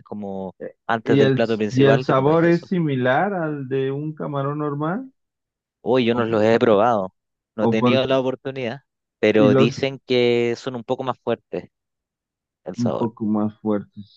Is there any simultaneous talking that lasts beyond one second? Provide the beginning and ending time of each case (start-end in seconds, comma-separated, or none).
1.0-2.7